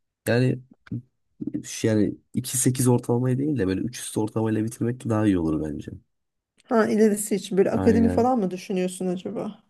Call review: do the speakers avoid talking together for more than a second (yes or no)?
yes